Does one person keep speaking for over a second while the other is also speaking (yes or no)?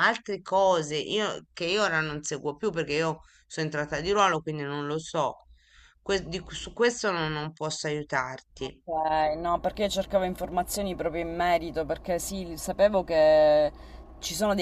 no